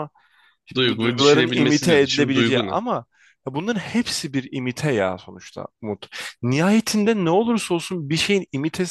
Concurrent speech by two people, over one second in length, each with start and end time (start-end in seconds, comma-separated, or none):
0.8-2.8